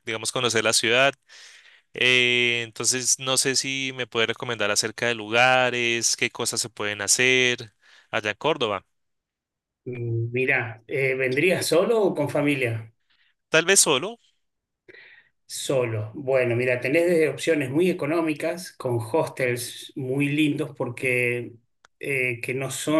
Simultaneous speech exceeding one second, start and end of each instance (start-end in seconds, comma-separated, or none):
none